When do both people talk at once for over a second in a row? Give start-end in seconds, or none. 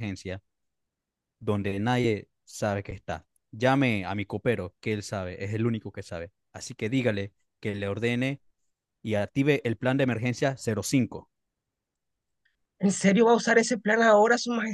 none